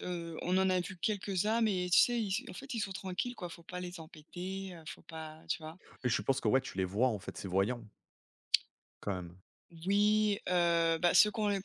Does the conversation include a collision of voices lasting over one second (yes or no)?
no